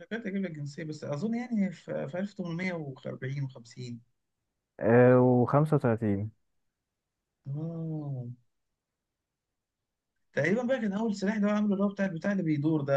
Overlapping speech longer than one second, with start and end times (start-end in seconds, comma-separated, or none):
none